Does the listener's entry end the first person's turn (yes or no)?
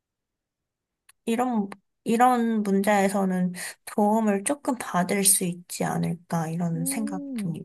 yes